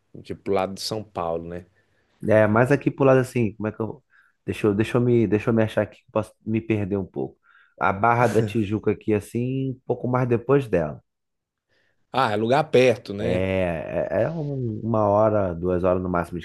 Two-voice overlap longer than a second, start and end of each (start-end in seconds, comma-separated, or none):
none